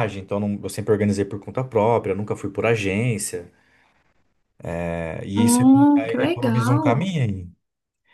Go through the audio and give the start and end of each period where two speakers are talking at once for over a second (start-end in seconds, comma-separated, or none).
5.4-7.1